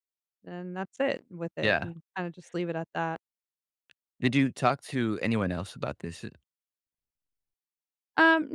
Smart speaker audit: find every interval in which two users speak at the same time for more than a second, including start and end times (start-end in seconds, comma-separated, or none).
none